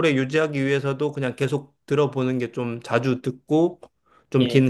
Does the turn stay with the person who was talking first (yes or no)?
yes